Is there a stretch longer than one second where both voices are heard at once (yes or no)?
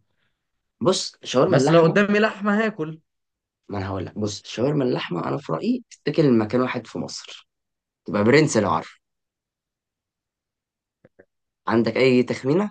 no